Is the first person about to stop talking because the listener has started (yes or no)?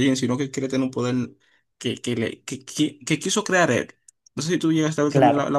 no